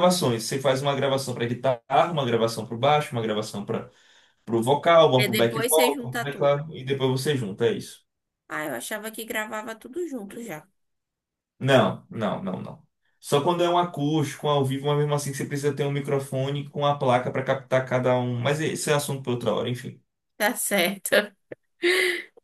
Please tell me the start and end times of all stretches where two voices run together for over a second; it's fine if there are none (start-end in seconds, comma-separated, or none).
5.2-6.6